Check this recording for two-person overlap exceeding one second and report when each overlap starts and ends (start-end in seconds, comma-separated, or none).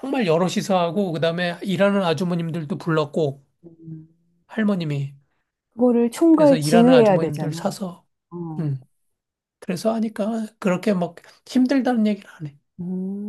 6.3-7.7